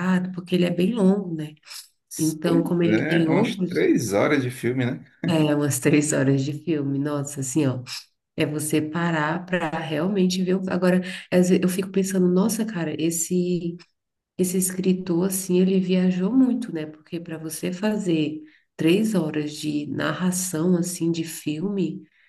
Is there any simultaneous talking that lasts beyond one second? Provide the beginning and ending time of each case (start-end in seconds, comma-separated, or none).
2.4-3.9